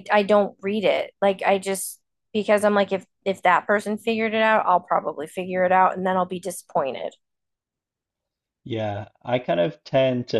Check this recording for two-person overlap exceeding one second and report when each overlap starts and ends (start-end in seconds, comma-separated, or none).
none